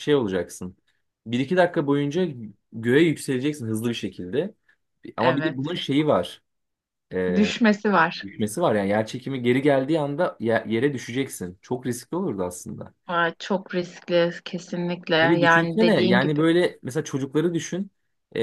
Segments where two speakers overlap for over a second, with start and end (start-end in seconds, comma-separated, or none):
15.2-16.4